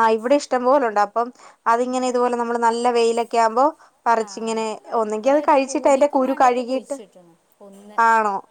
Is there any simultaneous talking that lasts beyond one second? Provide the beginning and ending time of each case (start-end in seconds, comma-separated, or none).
5.2-7.0